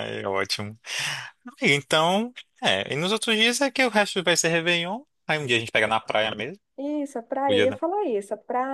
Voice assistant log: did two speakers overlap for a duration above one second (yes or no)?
no